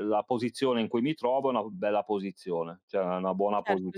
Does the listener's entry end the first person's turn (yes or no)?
yes